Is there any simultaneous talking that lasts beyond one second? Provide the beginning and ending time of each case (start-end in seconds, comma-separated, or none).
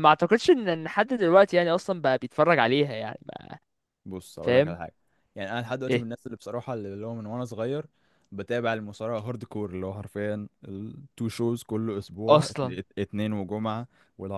none